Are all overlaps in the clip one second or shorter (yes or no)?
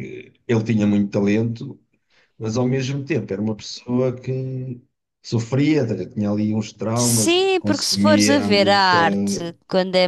no